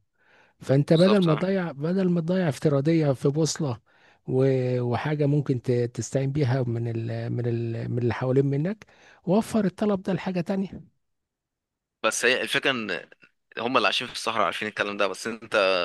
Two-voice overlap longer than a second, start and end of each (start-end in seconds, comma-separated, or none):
none